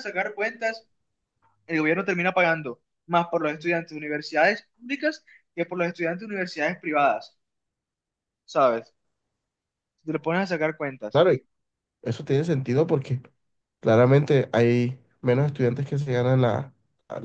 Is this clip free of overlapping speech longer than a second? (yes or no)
yes